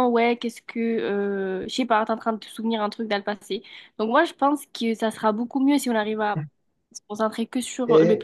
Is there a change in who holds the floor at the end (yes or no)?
yes